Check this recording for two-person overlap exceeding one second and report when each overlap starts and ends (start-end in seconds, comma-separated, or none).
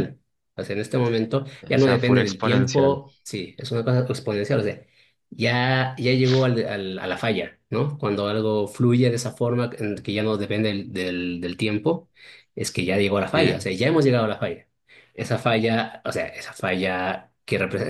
1.7-3.0